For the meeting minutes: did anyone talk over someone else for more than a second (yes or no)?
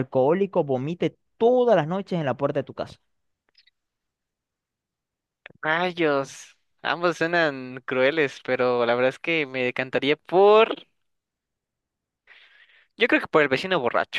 no